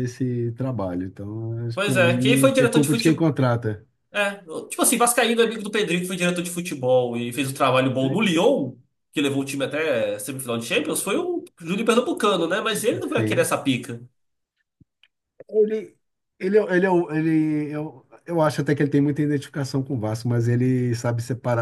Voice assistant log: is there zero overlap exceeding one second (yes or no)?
no